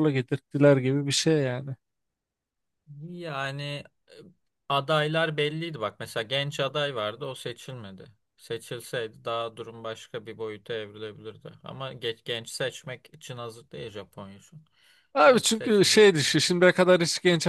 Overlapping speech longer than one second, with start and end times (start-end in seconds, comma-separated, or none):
15.3-16.6